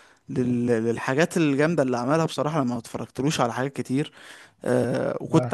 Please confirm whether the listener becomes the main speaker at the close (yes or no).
no